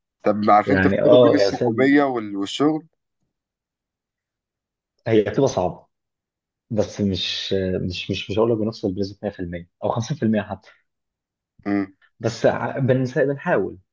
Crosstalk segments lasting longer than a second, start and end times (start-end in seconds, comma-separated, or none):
0.7-2.0